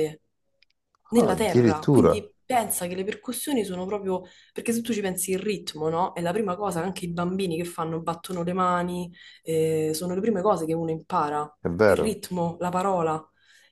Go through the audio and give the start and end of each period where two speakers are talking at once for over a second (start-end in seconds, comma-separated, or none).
1.1-2.3